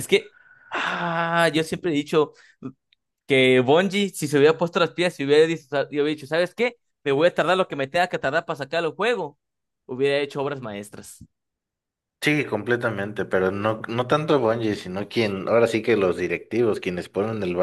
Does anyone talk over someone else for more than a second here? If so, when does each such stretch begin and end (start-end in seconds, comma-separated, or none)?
none